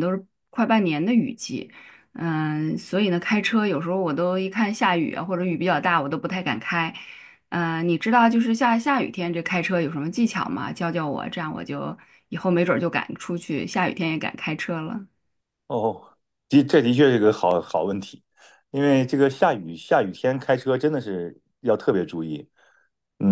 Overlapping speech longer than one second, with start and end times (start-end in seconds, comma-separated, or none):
none